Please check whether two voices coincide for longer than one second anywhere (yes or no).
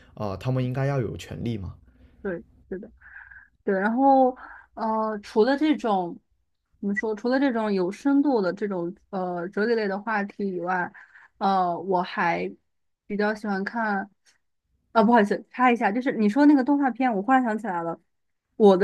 no